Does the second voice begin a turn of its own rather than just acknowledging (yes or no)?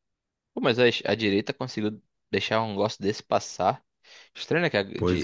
no